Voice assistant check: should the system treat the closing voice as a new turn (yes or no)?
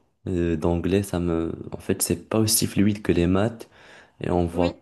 no